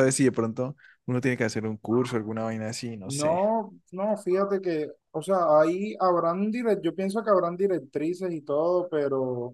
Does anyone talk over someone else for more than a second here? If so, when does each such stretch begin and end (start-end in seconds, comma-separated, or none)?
none